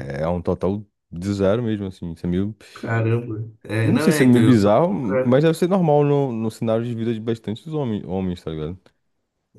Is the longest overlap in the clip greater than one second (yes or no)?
yes